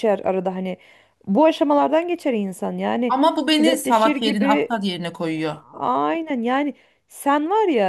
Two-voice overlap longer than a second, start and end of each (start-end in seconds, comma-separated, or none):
3.1-4.7